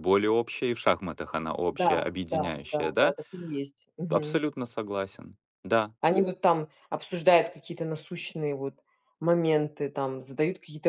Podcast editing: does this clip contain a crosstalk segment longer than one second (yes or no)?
yes